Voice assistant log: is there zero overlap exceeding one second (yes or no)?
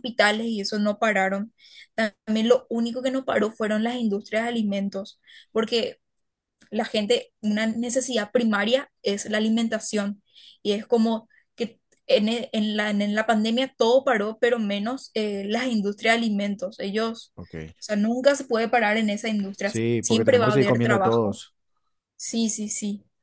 no